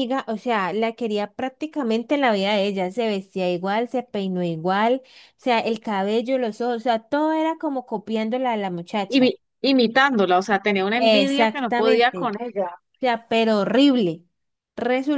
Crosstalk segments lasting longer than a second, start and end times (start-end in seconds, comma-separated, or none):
11.0-12.3